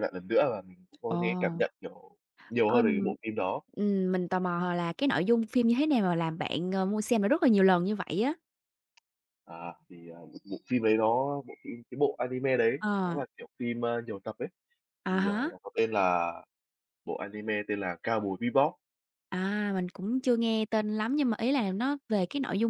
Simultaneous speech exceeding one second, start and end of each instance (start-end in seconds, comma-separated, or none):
none